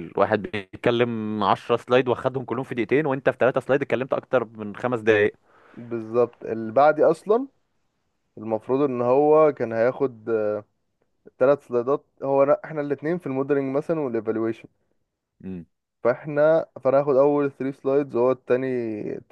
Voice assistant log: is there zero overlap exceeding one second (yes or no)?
yes